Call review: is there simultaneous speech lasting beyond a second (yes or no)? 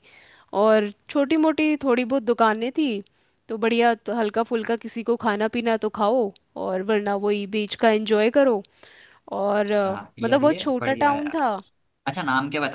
yes